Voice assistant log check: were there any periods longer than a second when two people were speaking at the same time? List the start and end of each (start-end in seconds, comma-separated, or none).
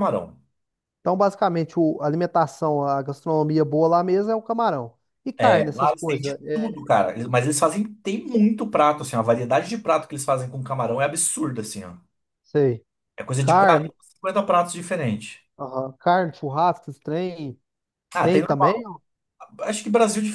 5.4-6.8